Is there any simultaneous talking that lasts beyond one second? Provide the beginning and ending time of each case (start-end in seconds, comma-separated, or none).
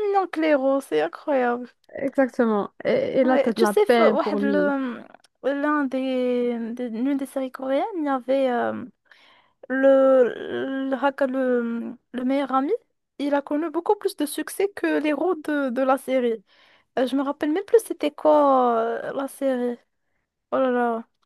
3.2-4.7